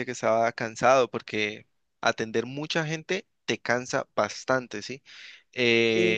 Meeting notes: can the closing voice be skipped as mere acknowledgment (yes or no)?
yes